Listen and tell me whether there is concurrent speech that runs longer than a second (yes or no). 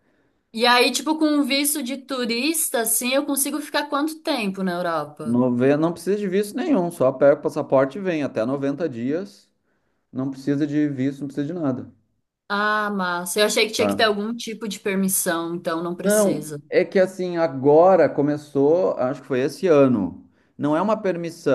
no